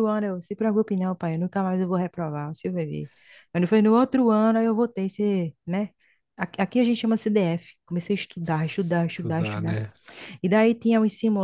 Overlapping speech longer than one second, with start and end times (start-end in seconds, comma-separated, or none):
8.4-9.8